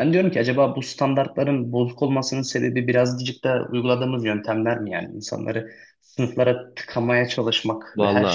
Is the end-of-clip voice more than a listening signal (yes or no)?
no